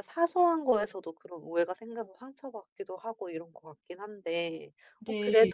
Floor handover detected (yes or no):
no